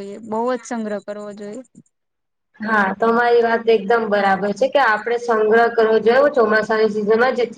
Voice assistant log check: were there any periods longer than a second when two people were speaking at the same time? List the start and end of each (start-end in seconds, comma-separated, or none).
none